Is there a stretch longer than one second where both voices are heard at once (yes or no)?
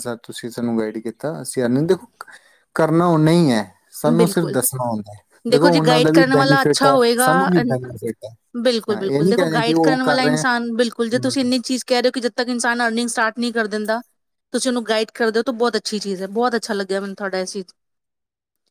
yes